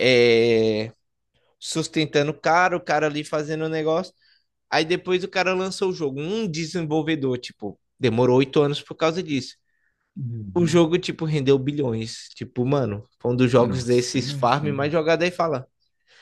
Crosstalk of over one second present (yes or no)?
yes